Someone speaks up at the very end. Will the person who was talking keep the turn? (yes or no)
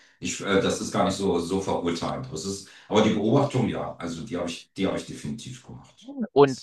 no